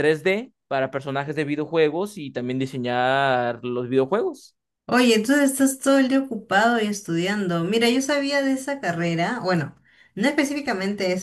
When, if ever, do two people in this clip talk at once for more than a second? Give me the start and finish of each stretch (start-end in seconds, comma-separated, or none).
none